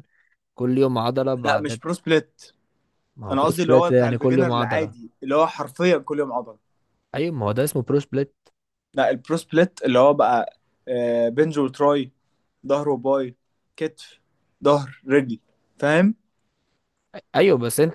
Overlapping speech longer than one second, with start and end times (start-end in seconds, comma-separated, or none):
3.3-4.9